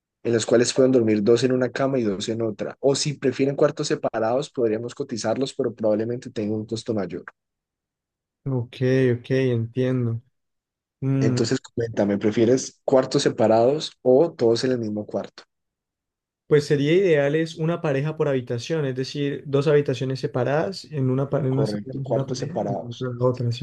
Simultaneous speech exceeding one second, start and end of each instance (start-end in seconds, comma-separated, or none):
21.5-23.1